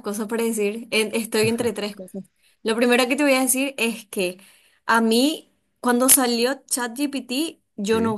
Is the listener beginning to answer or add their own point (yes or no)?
no